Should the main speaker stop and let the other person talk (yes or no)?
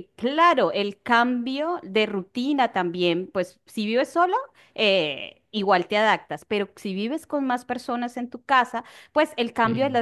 no